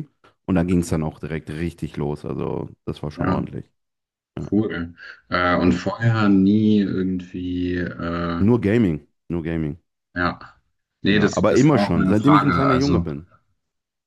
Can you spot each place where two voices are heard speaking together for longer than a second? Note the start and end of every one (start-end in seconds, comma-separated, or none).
11.1-13.0